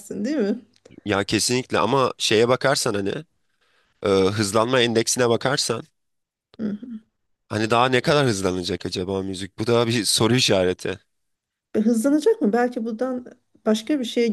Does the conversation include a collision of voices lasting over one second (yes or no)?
no